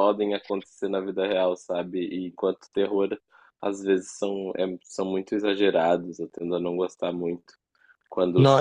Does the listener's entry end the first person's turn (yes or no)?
no